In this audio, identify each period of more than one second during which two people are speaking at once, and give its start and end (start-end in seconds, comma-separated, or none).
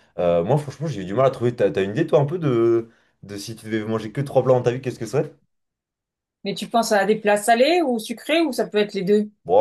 none